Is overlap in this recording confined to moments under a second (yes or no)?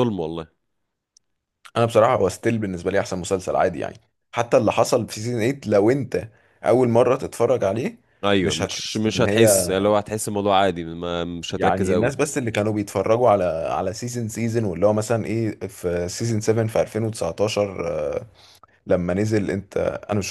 no